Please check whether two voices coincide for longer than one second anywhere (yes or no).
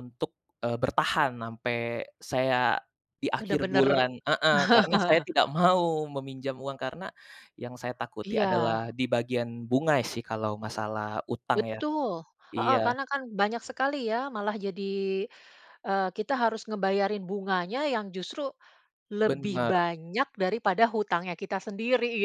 no